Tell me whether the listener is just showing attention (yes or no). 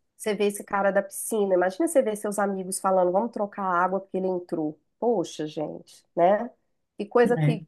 yes